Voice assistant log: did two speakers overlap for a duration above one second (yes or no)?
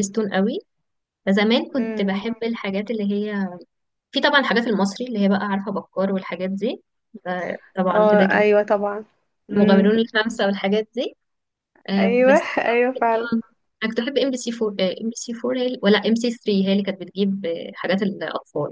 yes